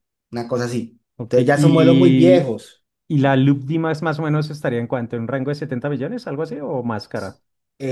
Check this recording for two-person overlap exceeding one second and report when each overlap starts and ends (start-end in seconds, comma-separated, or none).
1.2-2.5